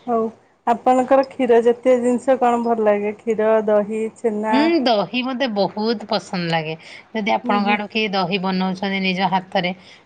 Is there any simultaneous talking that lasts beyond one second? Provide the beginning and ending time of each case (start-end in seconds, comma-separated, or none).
none